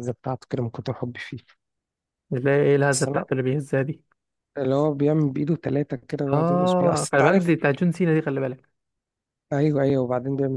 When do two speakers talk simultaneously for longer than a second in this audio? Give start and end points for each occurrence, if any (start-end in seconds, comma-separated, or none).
6.3-7.5